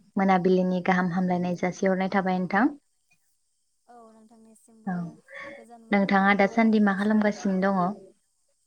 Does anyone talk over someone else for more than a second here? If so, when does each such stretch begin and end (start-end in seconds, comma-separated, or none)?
5.9-7.4